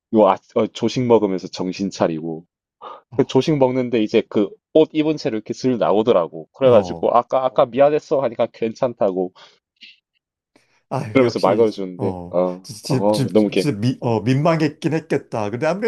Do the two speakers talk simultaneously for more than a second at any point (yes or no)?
yes